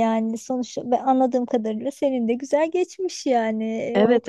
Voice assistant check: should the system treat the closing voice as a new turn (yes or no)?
yes